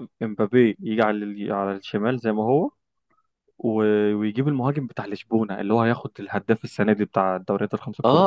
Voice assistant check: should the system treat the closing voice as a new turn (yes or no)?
yes